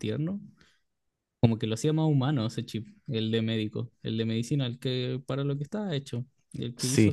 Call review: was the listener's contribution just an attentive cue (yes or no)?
no